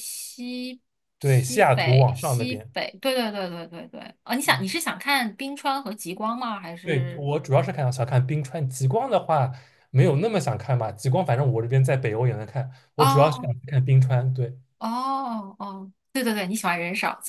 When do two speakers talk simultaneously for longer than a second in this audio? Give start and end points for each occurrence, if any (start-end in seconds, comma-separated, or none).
1.2-2.7